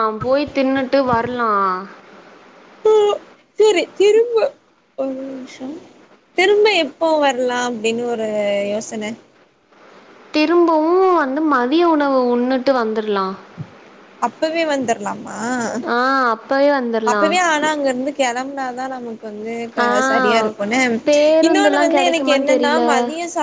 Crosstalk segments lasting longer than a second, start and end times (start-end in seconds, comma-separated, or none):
21.4-22.8